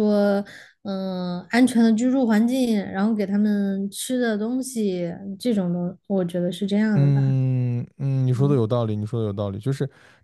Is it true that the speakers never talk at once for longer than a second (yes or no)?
yes